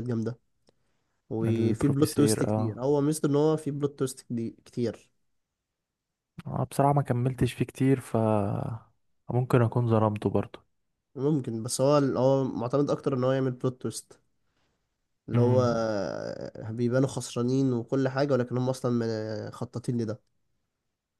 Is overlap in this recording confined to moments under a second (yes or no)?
no